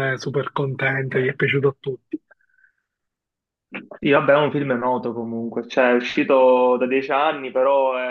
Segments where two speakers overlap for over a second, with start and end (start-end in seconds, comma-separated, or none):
none